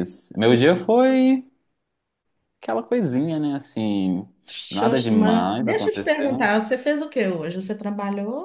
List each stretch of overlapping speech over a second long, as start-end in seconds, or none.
4.7-6.5